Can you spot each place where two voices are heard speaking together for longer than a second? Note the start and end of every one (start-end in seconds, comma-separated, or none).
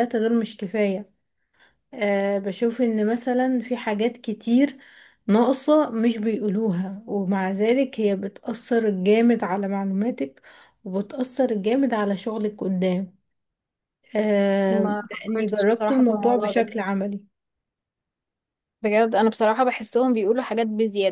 14.7-16.7